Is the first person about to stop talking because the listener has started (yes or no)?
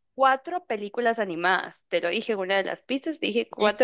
yes